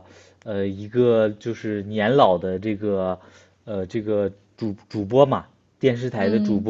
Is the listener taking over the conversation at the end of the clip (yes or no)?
no